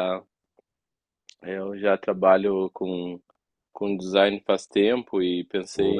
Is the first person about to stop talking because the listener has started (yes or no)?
no